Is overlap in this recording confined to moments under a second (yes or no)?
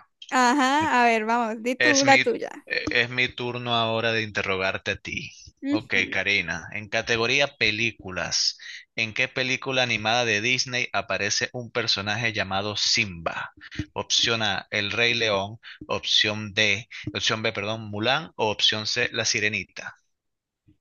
yes